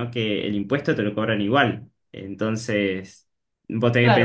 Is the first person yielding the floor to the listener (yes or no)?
yes